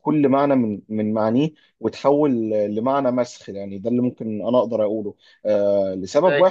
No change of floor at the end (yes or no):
yes